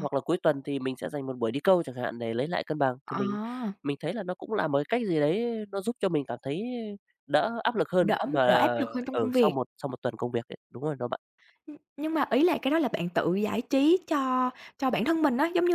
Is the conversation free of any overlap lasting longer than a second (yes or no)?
yes